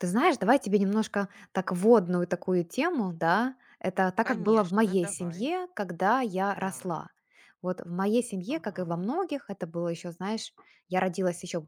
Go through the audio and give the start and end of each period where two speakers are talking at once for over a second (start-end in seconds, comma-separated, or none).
4.2-5.5